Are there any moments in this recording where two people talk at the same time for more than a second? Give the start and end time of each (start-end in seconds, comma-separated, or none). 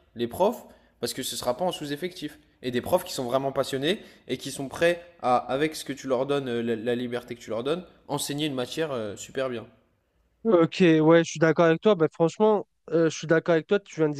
none